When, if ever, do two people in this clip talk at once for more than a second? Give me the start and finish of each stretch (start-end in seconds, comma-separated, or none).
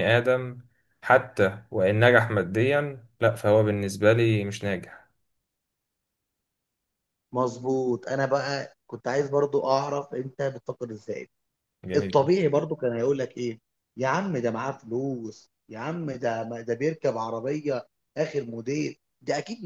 none